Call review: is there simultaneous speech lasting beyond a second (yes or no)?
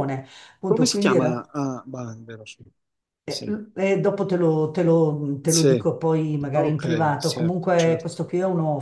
yes